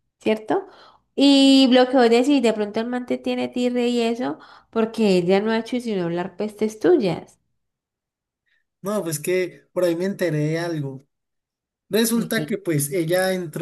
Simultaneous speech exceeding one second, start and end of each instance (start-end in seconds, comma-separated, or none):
none